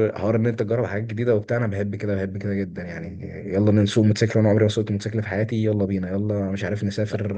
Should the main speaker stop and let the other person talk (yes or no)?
no